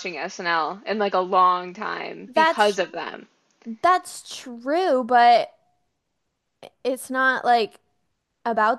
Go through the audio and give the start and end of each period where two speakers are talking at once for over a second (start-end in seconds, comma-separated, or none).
none